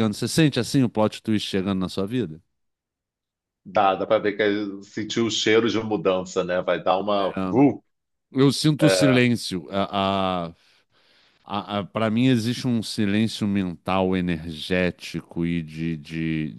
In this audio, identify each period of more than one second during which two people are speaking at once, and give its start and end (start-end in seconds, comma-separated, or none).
none